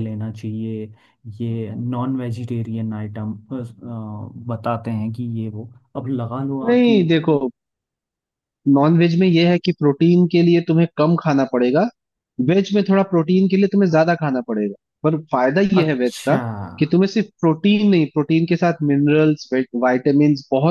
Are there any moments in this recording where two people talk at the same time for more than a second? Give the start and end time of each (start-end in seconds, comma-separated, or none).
none